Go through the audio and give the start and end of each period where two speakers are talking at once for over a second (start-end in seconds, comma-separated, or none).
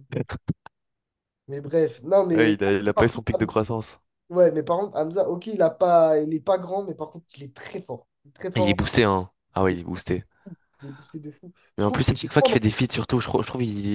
2.3-3.6